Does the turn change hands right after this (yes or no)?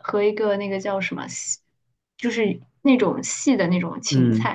no